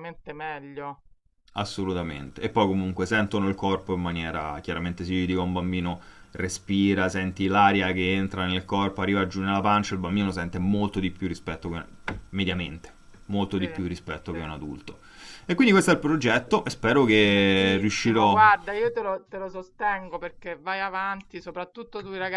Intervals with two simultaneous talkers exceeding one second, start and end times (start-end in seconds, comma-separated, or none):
17.2-18.4